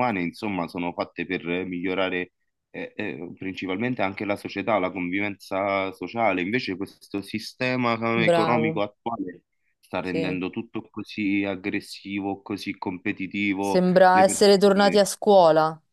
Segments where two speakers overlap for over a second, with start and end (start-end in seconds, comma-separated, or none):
13.6-15.0